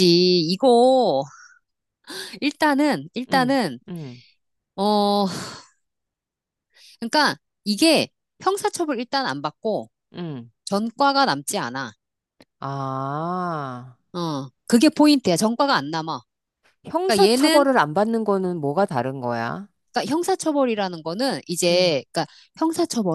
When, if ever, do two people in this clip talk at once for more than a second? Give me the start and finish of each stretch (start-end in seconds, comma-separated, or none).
none